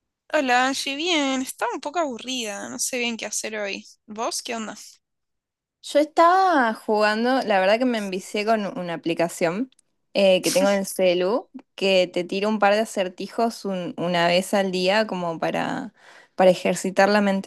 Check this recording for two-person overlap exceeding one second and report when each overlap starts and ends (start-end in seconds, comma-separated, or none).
none